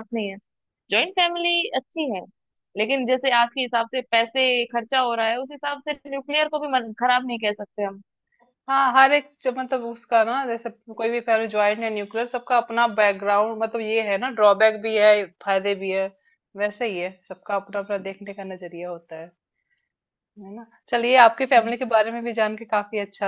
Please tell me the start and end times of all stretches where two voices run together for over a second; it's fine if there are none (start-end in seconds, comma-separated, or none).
none